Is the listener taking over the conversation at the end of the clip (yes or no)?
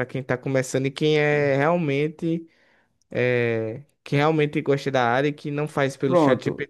yes